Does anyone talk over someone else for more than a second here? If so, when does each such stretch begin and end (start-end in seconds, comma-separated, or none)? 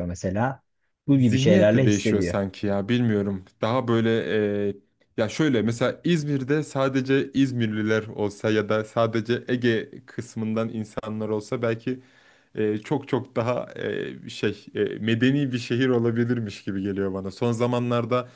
1.2-2.4